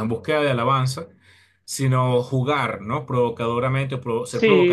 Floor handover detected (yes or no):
yes